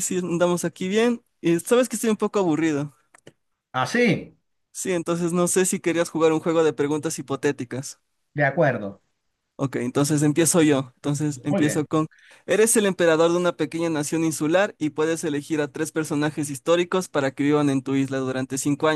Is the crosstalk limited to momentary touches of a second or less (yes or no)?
yes